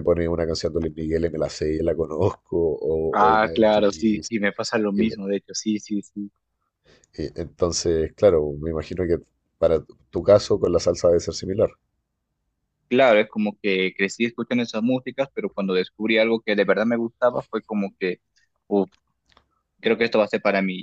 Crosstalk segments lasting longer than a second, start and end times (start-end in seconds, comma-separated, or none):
3.1-4.3